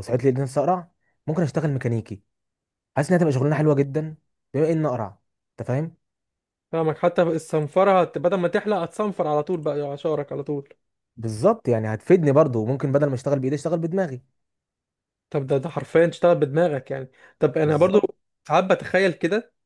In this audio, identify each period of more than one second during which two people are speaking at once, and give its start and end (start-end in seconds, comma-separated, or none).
none